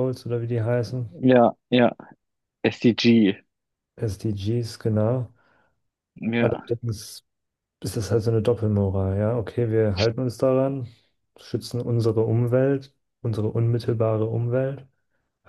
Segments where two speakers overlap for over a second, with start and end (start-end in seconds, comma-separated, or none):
none